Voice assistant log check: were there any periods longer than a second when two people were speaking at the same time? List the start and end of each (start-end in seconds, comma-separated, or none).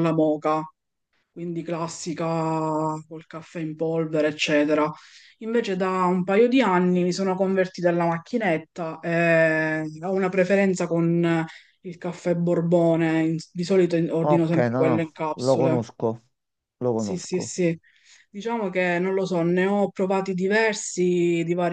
14.2-15.8